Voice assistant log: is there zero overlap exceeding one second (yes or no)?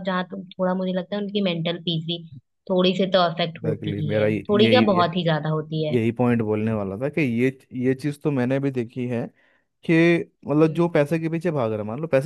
no